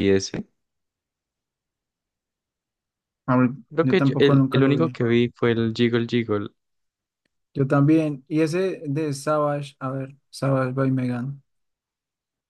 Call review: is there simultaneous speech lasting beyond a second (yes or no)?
yes